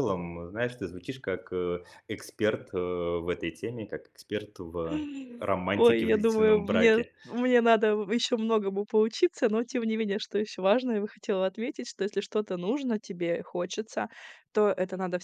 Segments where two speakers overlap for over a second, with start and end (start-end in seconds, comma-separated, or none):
5.7-7.1